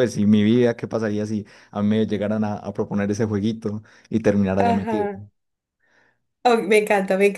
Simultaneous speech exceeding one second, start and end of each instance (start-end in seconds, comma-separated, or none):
none